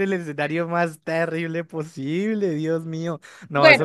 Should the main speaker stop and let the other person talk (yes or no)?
yes